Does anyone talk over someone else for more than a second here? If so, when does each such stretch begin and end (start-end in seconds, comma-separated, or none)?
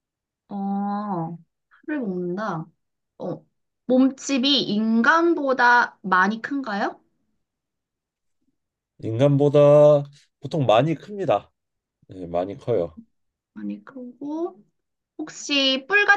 none